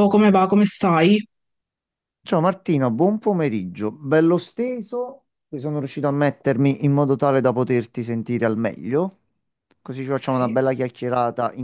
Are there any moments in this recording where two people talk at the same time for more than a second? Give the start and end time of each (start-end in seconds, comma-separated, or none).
none